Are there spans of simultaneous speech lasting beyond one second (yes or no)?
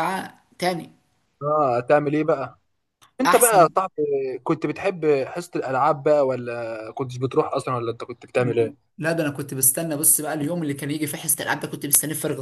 no